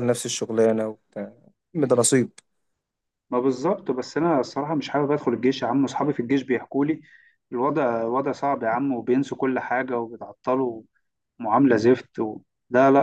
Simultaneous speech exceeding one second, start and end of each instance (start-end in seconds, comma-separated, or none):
none